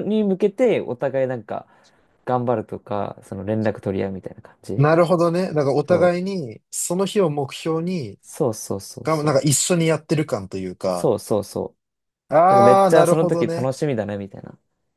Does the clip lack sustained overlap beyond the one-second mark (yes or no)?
no